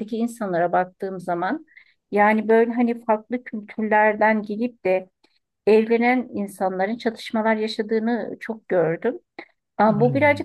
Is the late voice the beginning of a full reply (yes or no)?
no